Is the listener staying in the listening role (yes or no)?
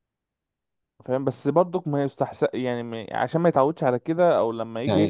yes